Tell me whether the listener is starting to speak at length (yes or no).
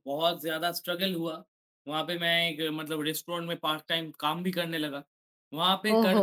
no